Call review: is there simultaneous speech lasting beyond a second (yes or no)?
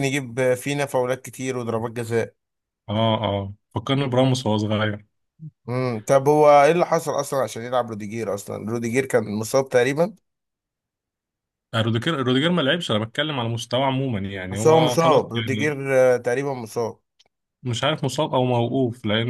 yes